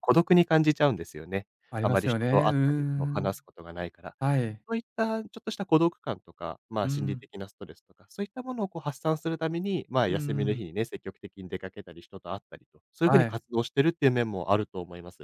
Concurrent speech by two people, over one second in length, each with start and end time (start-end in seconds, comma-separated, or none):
1.7-3.4